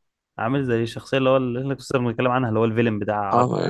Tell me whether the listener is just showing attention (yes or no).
no